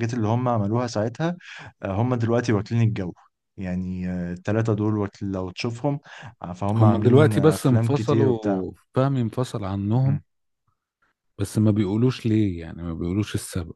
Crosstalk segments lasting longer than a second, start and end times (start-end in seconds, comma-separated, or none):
6.8-8.6